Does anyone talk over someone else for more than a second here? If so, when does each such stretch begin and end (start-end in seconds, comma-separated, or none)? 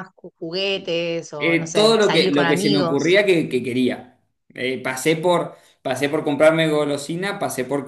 1.4-3.2